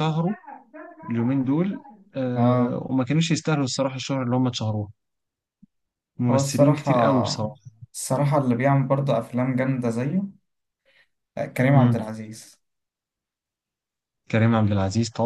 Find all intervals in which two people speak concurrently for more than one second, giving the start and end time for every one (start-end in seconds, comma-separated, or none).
6.3-7.5